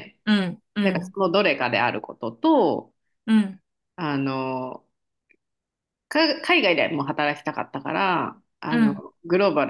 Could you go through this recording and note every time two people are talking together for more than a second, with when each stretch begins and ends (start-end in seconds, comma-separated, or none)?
none